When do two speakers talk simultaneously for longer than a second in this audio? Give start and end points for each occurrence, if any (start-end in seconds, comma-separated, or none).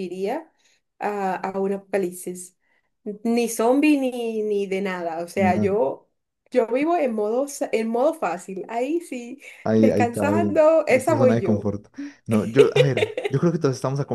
9.6-11.7